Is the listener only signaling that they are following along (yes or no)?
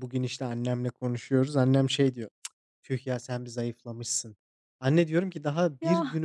yes